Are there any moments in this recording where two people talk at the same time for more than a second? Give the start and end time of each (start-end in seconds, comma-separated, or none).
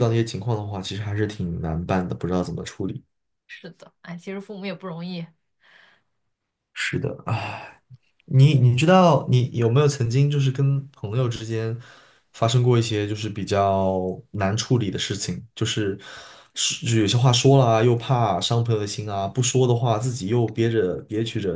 none